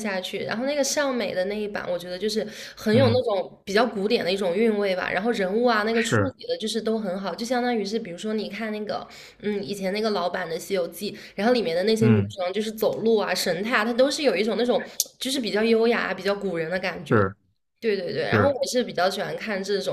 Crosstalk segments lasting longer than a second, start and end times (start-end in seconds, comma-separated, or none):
none